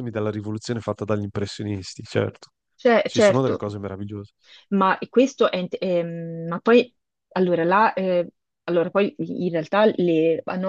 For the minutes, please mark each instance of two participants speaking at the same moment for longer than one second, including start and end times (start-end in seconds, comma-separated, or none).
none